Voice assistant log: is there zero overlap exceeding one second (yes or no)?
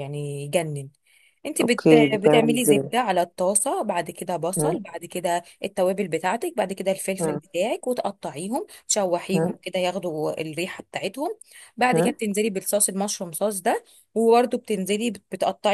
no